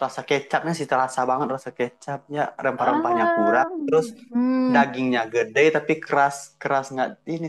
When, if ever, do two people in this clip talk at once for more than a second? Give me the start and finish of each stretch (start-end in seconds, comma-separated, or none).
2.8-4.1